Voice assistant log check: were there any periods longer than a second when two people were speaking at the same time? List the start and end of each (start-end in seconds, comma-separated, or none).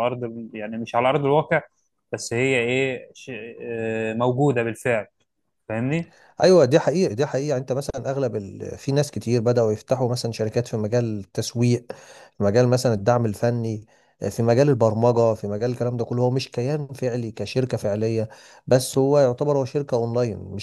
none